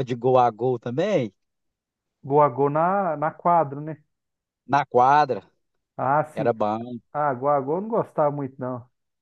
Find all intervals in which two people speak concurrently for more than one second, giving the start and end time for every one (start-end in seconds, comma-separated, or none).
none